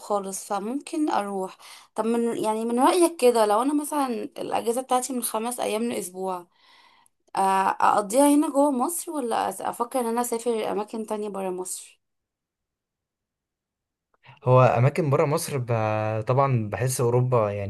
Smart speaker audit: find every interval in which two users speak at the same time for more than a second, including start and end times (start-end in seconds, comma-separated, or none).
none